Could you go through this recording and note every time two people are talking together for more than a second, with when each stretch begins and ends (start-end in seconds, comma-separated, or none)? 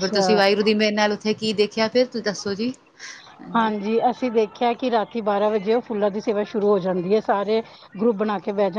none